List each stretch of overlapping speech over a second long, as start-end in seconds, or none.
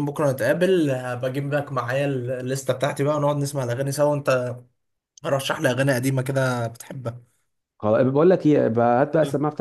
none